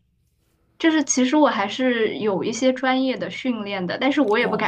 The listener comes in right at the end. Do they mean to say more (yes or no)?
no